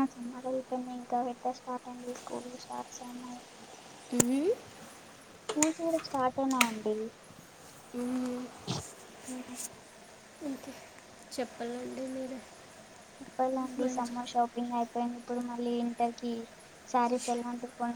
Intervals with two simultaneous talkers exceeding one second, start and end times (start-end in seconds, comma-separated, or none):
none